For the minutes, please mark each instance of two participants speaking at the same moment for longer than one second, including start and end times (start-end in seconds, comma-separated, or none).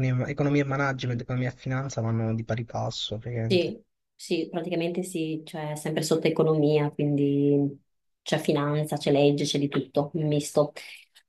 none